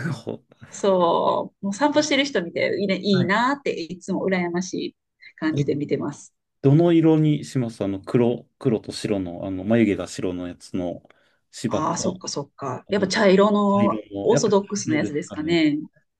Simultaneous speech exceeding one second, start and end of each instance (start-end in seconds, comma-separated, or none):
13.7-15.6